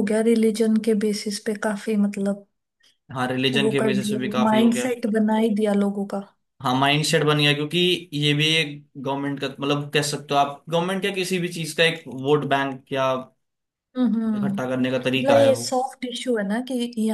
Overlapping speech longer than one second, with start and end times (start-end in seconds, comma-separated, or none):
3.6-4.9